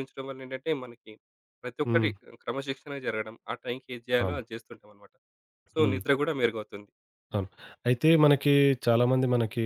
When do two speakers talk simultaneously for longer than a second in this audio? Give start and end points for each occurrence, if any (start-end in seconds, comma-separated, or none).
none